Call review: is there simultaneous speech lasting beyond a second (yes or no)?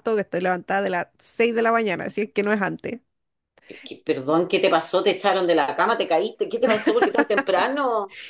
no